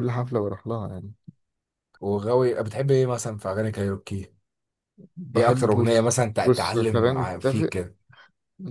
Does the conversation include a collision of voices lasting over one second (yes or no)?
yes